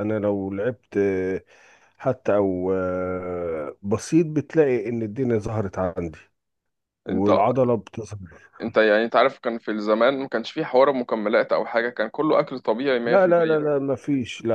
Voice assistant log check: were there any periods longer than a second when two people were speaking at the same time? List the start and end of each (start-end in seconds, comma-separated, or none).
none